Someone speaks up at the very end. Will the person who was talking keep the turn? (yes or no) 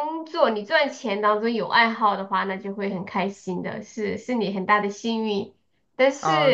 no